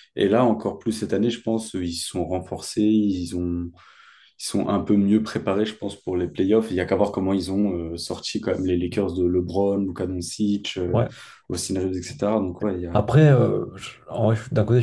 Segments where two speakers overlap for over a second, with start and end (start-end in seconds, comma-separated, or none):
none